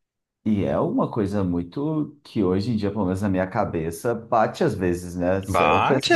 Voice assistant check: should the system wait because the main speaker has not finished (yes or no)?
no